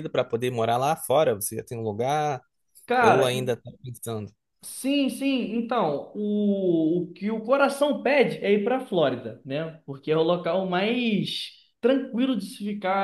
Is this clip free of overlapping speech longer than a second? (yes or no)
yes